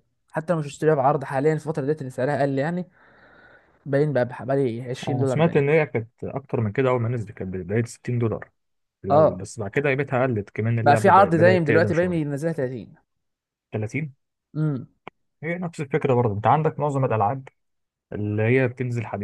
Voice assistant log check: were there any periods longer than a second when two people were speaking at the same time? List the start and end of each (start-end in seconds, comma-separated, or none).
10.8-12.3